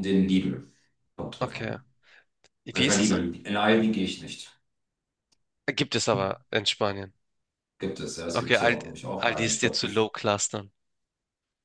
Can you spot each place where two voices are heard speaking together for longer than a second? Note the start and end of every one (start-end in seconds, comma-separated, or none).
8.3-10.1